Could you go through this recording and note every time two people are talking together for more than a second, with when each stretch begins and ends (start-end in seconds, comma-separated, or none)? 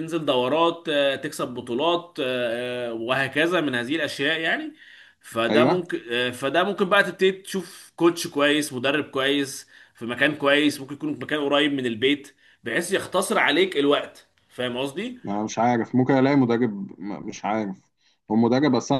none